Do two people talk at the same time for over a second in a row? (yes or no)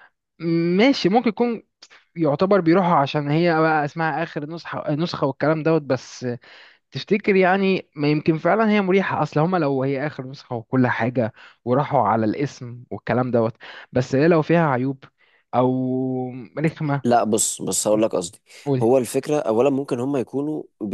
no